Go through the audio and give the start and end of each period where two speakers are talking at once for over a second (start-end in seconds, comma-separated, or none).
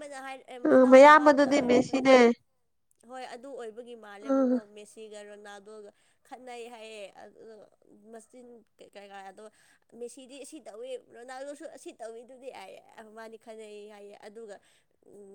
0.7-2.0